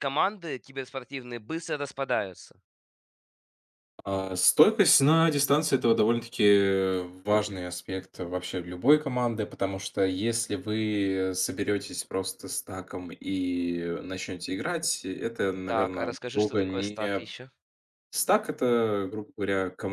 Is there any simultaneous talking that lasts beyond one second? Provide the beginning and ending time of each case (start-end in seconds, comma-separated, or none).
15.7-17.0